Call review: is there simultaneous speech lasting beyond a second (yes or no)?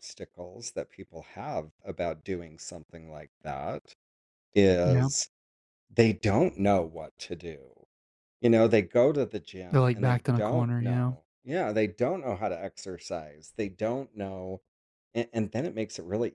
yes